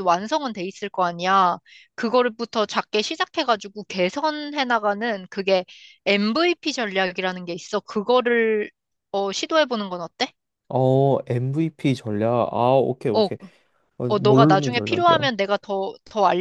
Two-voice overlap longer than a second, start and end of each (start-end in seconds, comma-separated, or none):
14.1-15.3